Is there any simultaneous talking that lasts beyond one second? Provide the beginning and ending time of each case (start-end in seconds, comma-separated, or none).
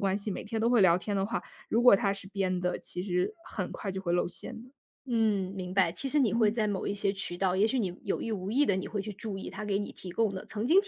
none